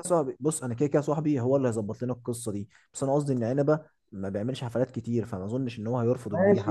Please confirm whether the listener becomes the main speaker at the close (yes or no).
yes